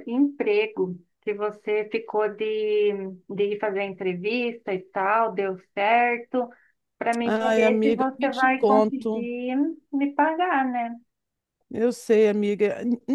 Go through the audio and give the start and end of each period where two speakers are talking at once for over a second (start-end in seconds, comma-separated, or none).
7.2-9.3